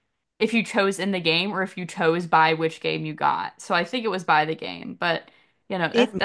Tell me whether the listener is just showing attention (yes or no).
no